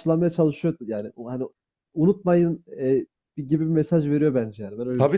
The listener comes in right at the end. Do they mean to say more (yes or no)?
yes